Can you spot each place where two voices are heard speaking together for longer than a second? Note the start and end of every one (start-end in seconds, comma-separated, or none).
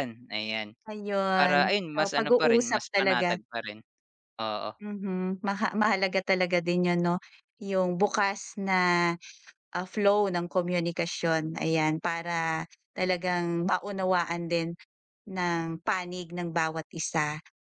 1.4-3.4